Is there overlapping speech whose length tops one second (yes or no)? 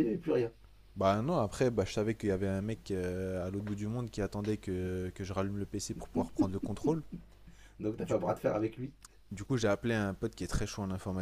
no